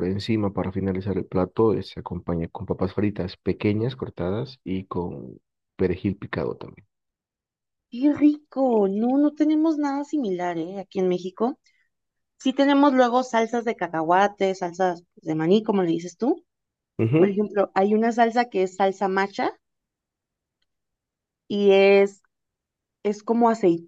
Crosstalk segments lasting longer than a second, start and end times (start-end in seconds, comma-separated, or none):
none